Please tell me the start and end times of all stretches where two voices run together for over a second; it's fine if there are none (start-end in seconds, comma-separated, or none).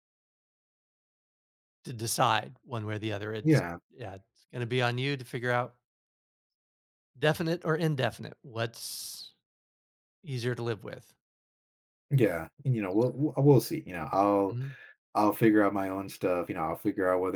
none